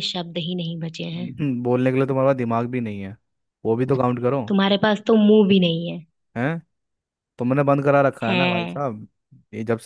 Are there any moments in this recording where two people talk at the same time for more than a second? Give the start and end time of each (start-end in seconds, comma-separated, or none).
none